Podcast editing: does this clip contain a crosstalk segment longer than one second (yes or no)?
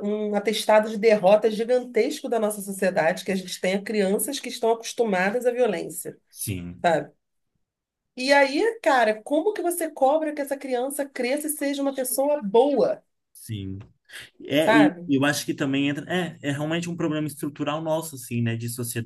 no